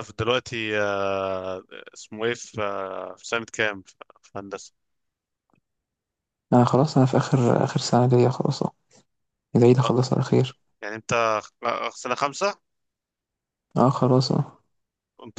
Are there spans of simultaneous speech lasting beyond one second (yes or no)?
no